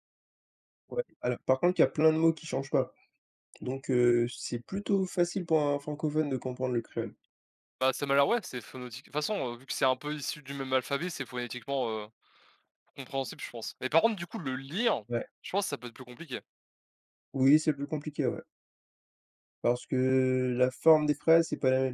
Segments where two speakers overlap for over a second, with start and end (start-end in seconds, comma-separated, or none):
none